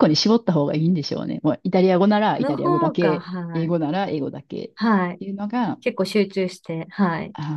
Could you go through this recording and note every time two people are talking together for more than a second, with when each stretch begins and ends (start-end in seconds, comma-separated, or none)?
2.4-3.8